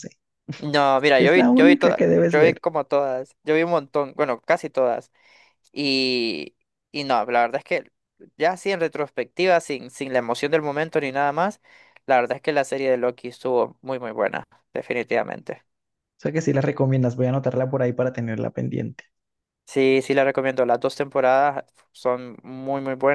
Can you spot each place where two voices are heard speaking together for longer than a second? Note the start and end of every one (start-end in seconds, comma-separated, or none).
1.2-2.6